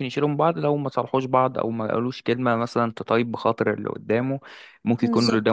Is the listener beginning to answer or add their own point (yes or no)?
no